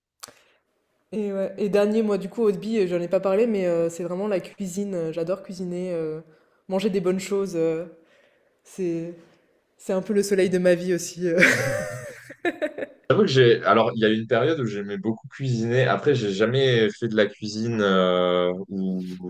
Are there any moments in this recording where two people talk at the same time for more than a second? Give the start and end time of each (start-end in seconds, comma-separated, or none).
none